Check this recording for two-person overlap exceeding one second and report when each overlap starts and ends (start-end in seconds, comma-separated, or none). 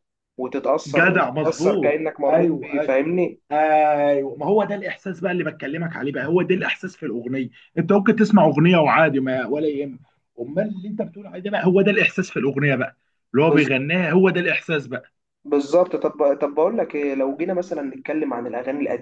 0.9-2.9